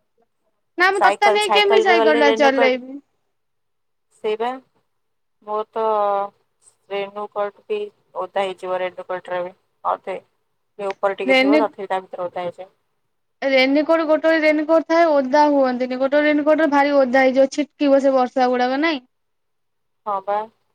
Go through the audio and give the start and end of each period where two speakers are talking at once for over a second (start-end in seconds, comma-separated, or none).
1.0-2.7